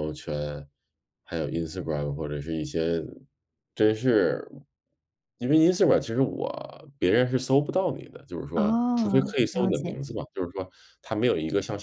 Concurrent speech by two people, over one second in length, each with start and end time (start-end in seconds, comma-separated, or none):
8.6-10.1